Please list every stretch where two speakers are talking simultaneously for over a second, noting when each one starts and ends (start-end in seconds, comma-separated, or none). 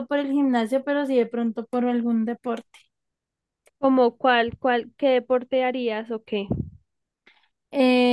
none